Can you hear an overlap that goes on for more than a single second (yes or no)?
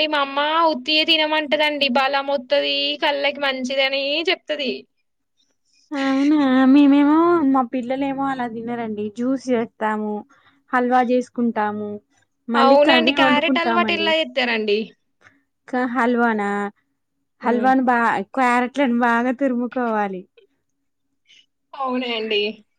yes